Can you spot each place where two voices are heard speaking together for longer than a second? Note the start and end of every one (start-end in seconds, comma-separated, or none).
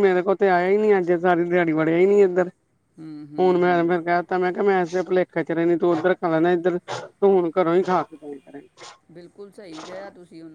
none